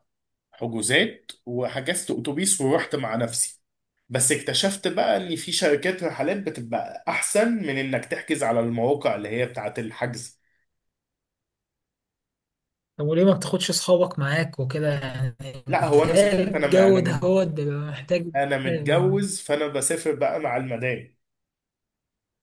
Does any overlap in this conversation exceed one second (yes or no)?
yes